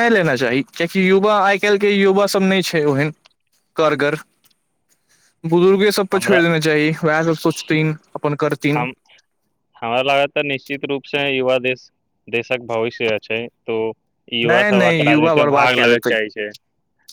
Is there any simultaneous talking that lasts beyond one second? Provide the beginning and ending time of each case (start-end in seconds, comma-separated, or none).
14.5-16.1